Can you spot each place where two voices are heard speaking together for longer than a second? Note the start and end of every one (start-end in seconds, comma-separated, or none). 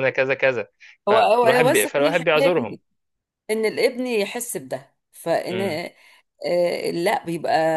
1.1-2.8